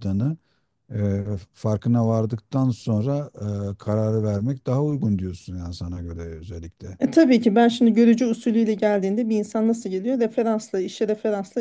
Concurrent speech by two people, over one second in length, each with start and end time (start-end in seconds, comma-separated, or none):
none